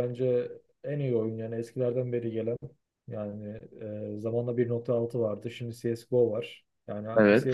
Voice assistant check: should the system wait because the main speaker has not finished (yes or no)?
yes